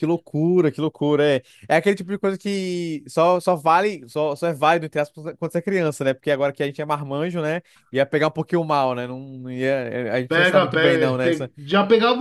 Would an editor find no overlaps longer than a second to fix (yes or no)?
no